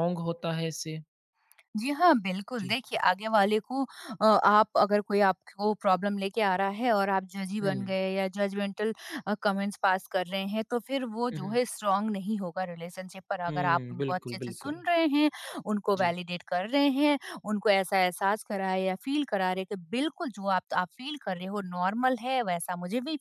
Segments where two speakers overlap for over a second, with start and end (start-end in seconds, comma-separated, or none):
13.5-14.8